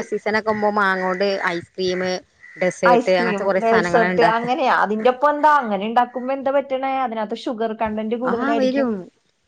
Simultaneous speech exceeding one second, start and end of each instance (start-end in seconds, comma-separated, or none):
2.9-4.5